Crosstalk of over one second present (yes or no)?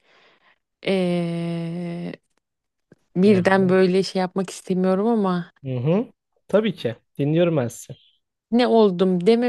no